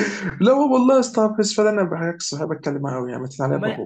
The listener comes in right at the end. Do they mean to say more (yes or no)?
yes